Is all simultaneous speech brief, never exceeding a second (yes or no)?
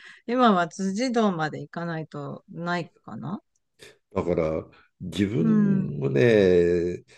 yes